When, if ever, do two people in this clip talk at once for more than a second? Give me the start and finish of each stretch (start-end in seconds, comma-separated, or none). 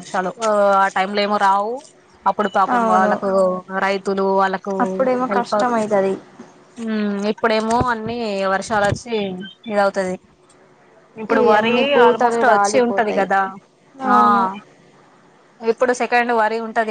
11.3-13.3